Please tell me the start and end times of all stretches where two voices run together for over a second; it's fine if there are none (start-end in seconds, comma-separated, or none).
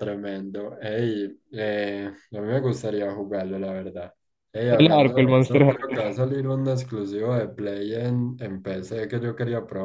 4.7-6.2